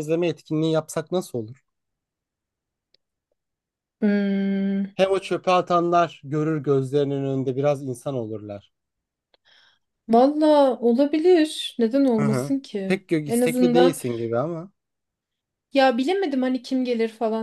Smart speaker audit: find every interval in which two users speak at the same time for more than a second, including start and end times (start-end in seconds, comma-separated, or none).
12.2-14.0